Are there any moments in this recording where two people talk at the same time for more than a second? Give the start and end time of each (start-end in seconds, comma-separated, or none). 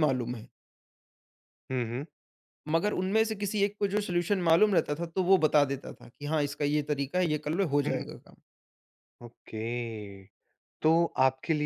none